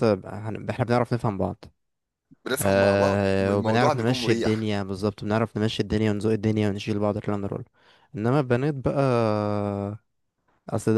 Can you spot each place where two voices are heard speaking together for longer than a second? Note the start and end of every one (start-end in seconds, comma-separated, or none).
2.6-4.7